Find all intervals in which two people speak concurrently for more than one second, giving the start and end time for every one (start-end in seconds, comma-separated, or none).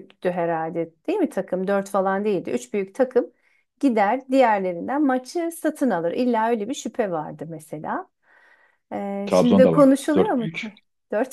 9.2-10.7